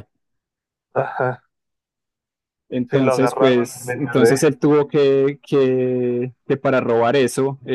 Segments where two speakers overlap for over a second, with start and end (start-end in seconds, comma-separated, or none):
2.9-4.4